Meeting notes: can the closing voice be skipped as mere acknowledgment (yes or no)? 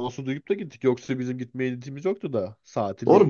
no